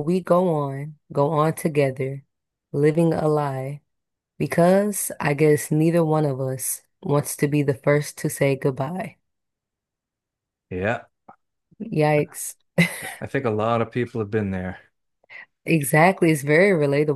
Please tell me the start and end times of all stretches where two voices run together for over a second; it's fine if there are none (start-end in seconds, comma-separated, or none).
none